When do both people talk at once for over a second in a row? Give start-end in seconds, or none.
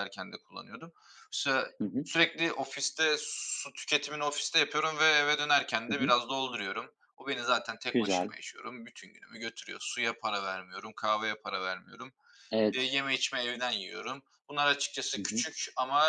none